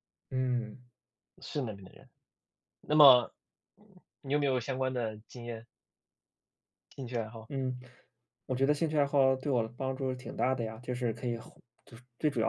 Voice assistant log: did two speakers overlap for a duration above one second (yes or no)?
no